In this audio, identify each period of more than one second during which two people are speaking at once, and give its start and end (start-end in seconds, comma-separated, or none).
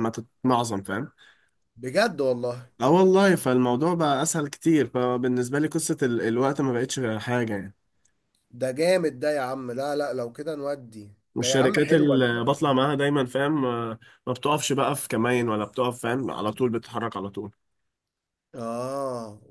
11.3-12.5